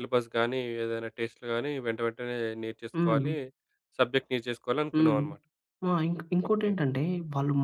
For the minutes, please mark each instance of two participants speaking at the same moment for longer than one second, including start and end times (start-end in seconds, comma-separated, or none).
none